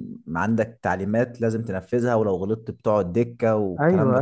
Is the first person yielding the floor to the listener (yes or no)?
yes